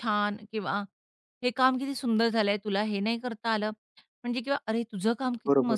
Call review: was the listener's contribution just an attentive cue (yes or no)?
yes